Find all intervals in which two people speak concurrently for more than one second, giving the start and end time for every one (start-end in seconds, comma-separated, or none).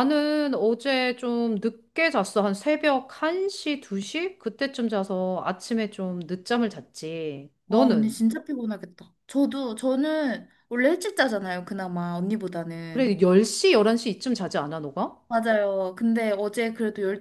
none